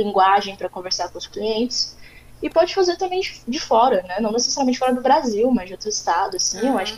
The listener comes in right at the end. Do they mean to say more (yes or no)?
yes